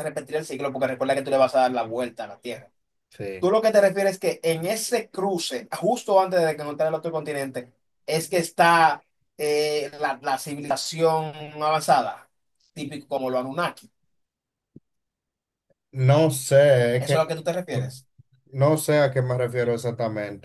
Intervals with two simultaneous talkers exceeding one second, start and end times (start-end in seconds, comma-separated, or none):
none